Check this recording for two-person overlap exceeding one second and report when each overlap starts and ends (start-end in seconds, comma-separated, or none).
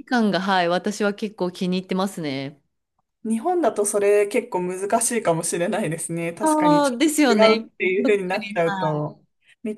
6.4-9.1